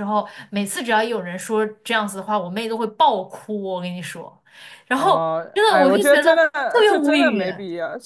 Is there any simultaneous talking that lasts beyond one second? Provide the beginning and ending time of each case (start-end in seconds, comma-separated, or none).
5.0-7.4